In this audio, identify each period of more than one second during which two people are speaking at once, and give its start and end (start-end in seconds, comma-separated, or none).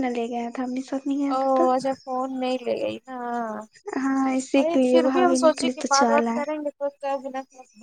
4.5-6.6